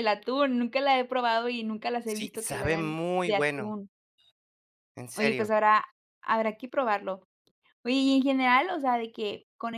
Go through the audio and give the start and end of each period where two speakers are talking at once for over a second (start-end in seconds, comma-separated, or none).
2.0-3.7